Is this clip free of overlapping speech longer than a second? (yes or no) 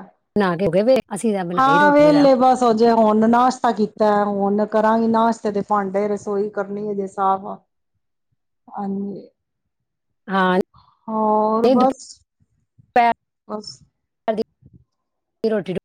yes